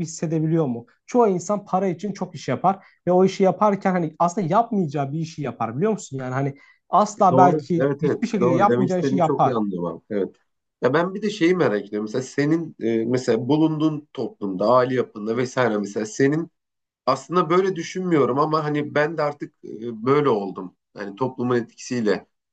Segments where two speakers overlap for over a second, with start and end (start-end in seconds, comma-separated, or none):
7.3-9.6